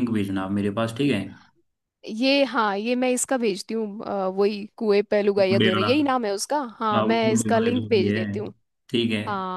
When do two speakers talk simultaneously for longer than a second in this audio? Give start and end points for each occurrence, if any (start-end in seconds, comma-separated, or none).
6.9-8.2